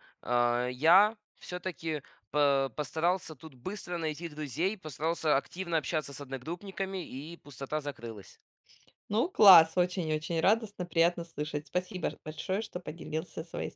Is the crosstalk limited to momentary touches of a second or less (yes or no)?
yes